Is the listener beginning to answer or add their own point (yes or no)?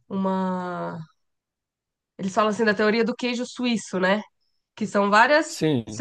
no